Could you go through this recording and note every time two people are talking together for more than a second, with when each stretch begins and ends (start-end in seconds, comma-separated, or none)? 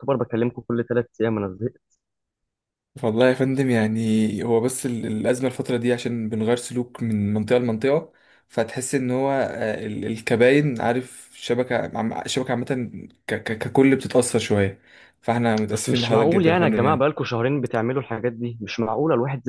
15.7-17.1